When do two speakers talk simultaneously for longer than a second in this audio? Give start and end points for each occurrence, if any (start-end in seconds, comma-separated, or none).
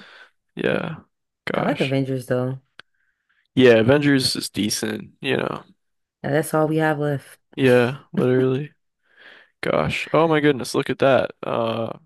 none